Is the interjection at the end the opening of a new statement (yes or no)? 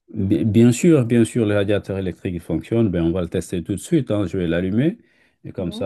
no